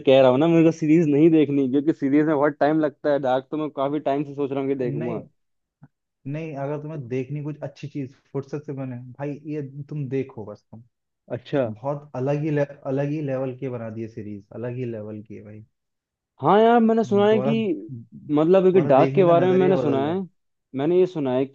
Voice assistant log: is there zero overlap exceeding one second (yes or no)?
no